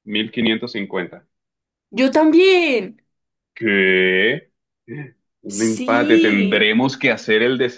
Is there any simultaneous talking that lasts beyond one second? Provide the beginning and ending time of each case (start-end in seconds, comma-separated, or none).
5.5-6.7